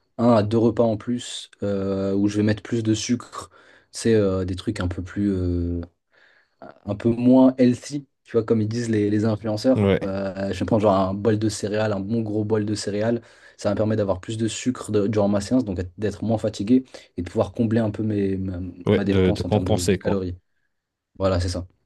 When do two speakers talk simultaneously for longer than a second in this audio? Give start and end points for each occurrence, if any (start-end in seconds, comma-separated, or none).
18.9-20.3